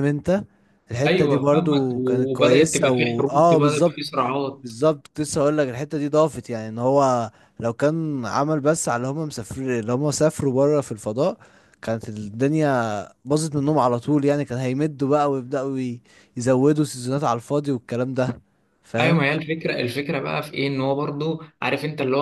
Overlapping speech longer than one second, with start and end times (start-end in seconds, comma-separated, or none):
1.1-4.0